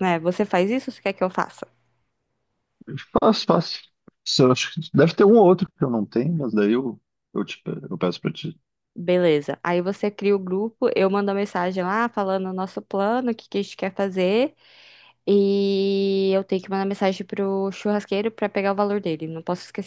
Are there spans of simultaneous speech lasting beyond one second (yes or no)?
no